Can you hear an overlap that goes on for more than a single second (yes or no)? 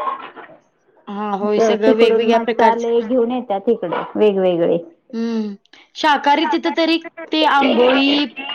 yes